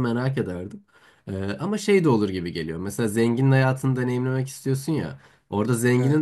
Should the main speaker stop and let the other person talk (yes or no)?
no